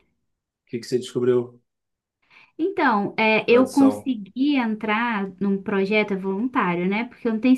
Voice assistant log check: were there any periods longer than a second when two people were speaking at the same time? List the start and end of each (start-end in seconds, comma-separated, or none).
none